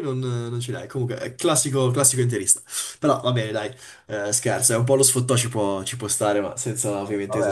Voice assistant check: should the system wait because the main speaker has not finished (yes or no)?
no